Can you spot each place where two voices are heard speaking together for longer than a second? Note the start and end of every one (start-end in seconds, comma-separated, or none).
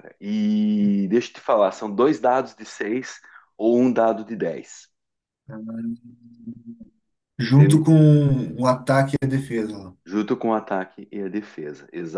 none